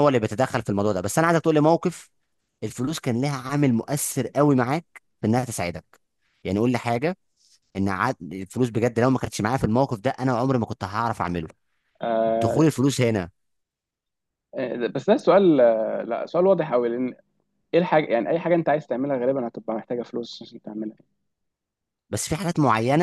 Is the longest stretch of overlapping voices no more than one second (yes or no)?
yes